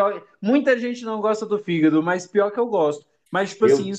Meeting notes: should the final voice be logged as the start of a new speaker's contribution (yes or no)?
no